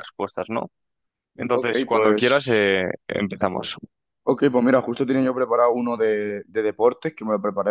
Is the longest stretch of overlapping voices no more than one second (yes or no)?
no